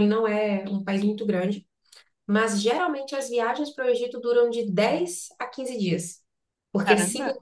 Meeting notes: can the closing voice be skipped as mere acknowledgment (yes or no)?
yes